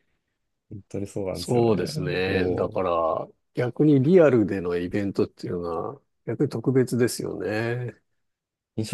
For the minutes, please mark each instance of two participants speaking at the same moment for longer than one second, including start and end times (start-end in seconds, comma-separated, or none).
1.3-2.8